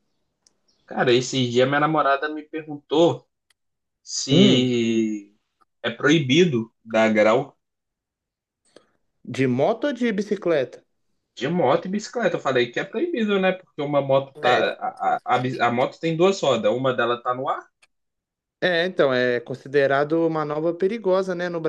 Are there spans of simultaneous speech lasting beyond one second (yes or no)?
no